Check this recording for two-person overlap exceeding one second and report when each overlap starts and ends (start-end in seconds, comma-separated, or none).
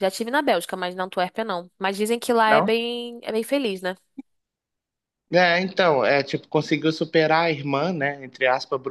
none